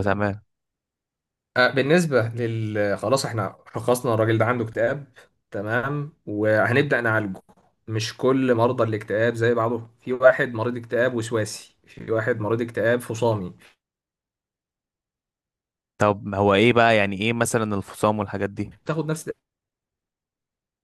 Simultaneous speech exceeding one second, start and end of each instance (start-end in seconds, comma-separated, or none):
none